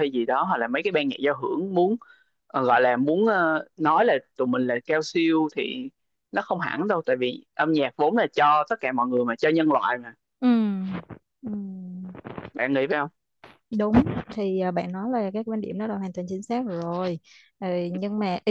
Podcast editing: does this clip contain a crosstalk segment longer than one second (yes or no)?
no